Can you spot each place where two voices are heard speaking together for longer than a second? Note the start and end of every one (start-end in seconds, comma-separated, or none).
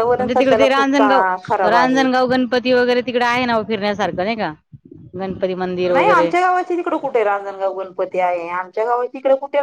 none